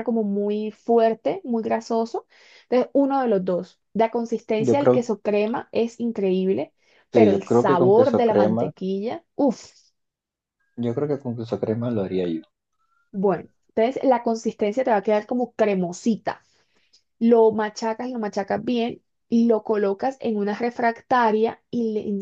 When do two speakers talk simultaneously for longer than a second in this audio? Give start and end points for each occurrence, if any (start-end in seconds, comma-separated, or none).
7.1-8.7